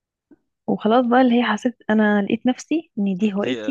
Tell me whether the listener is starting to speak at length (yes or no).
yes